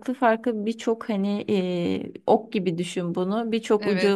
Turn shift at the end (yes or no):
no